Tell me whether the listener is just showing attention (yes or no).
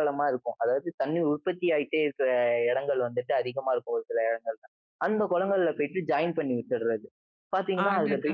yes